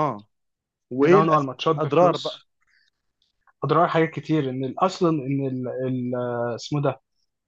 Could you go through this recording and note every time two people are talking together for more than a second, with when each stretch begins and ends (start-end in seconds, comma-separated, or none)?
1.0-2.4